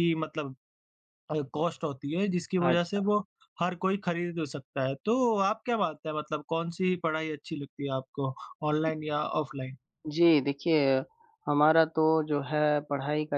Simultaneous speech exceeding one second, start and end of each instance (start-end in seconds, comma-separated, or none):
none